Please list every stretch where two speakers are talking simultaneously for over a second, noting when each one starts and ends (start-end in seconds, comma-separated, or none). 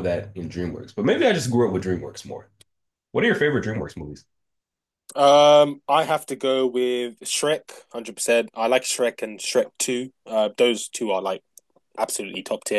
none